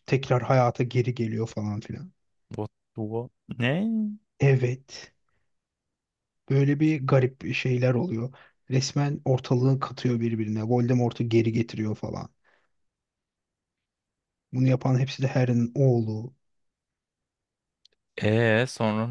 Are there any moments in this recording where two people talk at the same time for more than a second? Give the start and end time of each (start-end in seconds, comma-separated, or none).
none